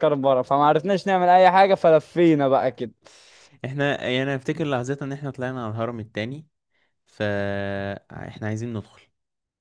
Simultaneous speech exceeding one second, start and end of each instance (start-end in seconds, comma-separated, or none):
none